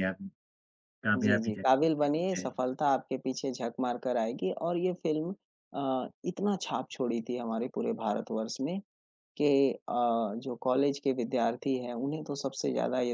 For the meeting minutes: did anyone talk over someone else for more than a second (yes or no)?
yes